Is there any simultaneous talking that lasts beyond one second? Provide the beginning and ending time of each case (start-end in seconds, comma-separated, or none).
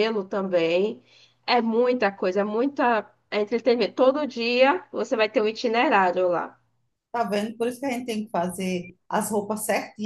none